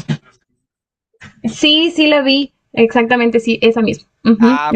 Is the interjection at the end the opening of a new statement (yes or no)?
yes